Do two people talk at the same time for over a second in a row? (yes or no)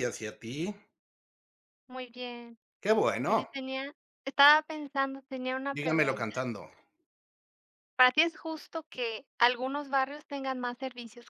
no